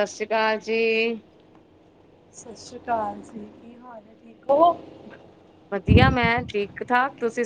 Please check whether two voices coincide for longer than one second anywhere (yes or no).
no